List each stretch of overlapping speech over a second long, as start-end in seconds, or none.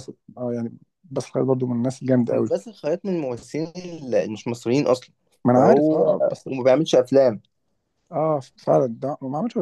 none